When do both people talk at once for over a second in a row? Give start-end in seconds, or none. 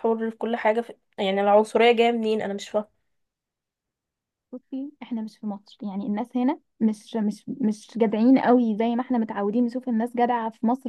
none